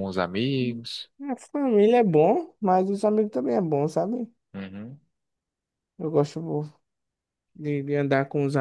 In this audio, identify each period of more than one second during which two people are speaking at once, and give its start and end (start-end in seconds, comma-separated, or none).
none